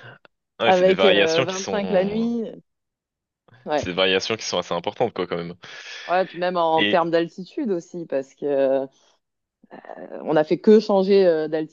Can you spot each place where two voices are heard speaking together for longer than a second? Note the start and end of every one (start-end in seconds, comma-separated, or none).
0.6-2.3